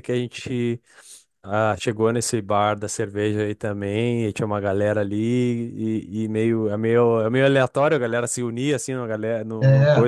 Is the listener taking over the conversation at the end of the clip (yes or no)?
no